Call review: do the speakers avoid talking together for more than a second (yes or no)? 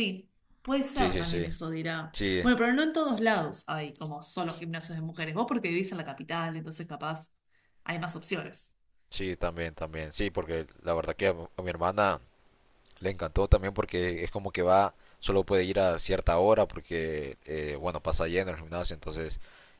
yes